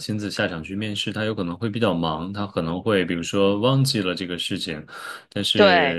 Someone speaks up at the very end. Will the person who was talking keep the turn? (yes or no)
yes